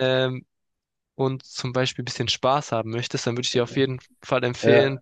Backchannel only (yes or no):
yes